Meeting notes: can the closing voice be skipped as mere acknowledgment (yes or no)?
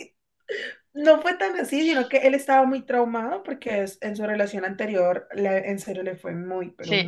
no